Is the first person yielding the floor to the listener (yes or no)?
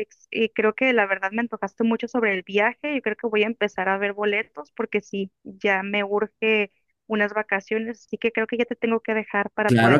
yes